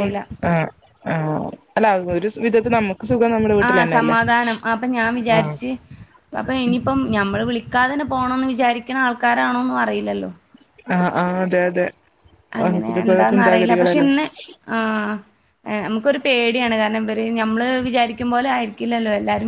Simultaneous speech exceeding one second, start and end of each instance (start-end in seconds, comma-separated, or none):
12.6-14.1